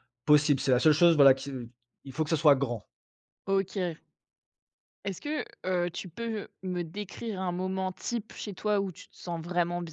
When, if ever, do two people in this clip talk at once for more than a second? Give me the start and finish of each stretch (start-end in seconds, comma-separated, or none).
none